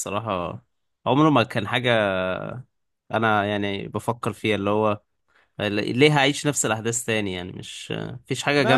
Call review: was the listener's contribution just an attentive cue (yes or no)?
no